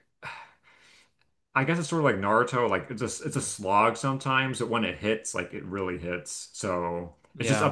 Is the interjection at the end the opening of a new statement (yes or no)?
no